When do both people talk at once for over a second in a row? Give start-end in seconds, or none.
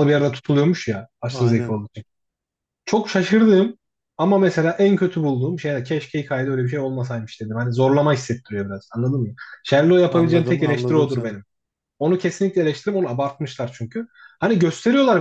10.1-11.4